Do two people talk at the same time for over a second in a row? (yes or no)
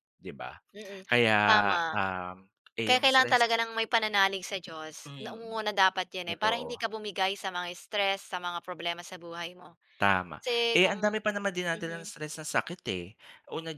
no